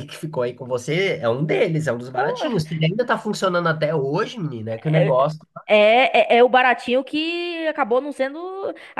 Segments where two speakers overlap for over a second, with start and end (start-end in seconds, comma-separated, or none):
none